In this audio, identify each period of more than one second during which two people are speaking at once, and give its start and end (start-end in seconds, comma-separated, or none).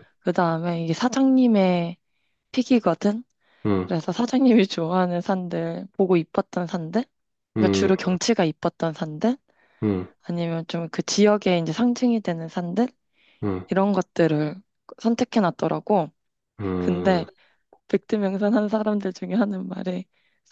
none